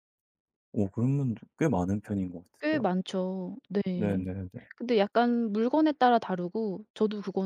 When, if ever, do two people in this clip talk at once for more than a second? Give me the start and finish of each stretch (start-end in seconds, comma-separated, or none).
none